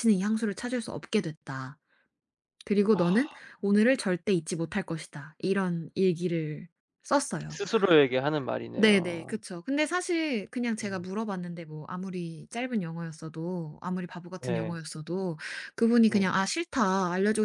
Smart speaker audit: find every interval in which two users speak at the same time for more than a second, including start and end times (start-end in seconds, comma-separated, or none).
none